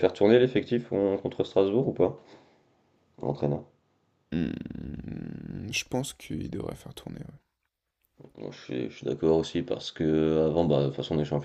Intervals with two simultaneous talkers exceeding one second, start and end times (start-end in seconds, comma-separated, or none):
none